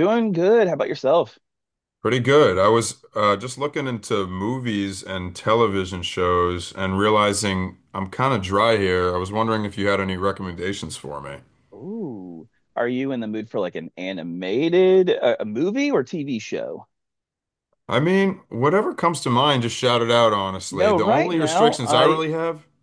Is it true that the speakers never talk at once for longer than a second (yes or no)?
no